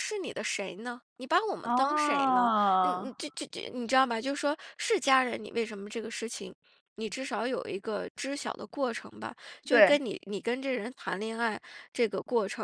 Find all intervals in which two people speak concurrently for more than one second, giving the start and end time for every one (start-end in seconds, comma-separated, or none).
1.6-3.1